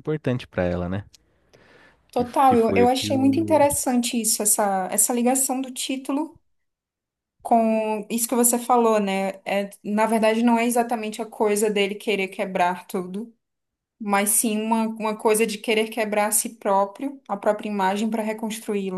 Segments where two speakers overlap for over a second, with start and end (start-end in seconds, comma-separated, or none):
2.1-3.7